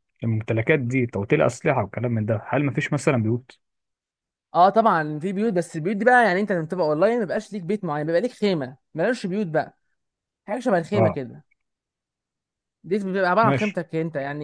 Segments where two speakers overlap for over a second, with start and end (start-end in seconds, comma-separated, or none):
none